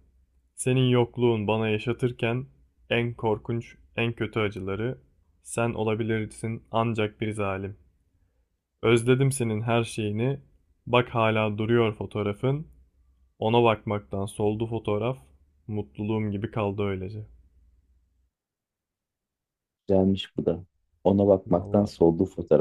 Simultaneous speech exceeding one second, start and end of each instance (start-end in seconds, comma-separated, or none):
none